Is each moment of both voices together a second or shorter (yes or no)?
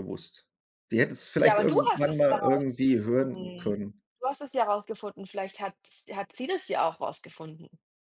no